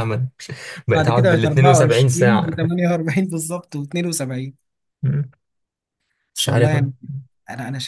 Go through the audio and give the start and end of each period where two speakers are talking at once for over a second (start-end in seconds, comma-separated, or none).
0.9-2.5